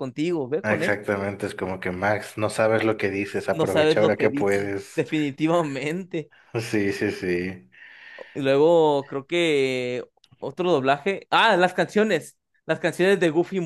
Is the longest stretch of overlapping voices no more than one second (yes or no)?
no